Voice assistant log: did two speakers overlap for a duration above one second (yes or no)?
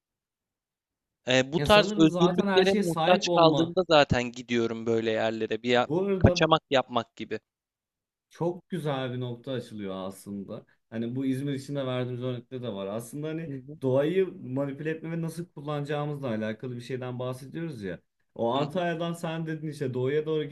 yes